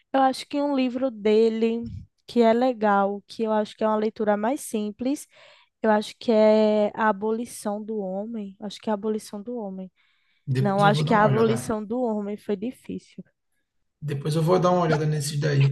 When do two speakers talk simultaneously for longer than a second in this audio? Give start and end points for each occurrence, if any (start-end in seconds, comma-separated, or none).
10.6-11.8